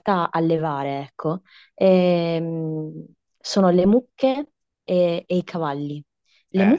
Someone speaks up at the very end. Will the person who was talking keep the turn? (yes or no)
yes